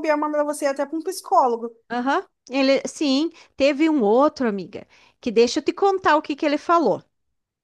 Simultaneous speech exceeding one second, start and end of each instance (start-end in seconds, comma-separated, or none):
none